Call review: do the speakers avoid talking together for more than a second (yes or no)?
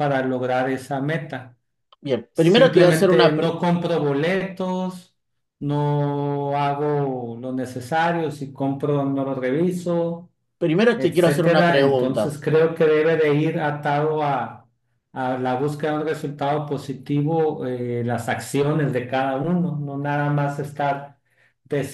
no